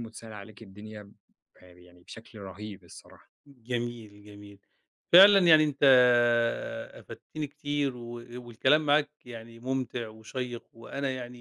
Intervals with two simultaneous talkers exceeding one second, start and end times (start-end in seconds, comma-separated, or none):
none